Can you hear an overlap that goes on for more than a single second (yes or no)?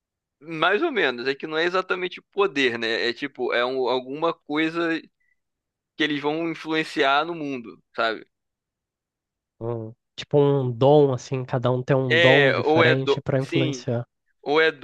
yes